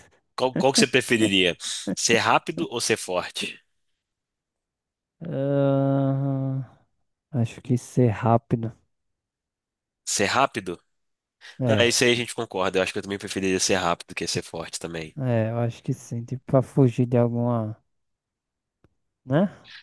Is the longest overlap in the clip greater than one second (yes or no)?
no